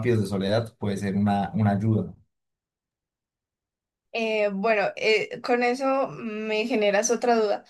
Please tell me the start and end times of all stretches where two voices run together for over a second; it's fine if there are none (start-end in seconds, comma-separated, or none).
none